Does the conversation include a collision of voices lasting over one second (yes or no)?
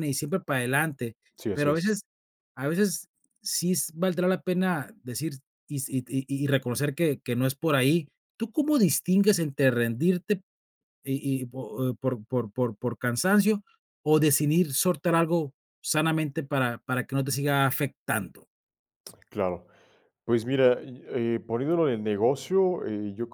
no